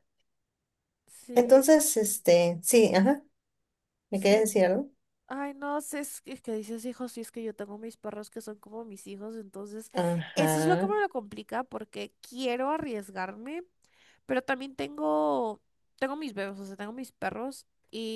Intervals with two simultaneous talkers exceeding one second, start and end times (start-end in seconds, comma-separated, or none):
none